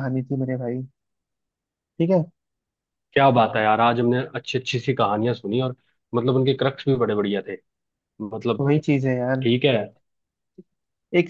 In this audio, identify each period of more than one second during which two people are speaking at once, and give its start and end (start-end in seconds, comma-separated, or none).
none